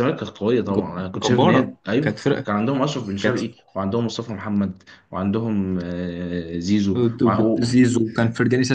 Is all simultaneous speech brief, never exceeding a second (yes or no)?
no